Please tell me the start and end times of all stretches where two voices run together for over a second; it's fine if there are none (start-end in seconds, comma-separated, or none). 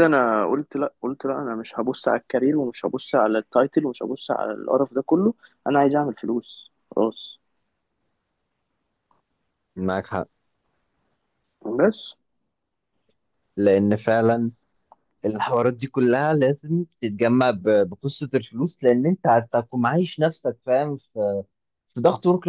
none